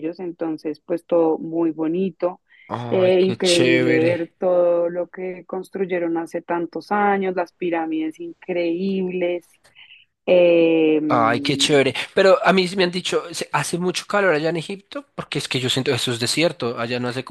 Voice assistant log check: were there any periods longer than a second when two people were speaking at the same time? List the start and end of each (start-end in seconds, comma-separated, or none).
2.9-4.3